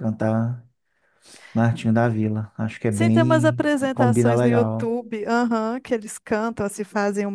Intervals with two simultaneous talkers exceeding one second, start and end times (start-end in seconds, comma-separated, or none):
2.9-4.9